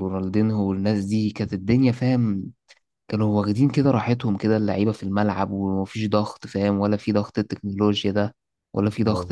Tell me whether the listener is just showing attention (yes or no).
yes